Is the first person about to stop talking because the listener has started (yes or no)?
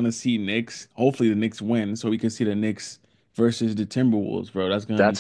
yes